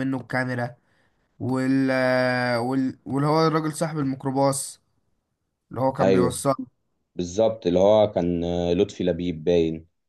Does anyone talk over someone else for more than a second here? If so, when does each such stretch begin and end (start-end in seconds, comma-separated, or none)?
none